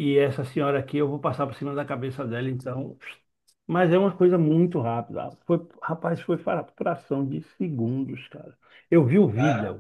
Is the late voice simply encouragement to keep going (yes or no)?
yes